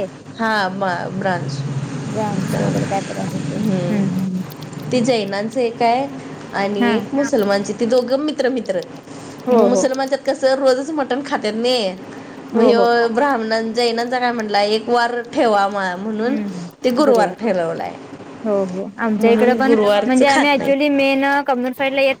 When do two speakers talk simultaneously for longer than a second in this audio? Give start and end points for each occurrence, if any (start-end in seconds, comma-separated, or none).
19.2-20.9